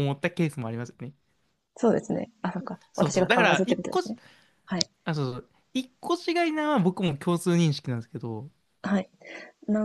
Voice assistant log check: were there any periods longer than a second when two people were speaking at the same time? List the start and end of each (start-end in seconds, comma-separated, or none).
2.9-4.1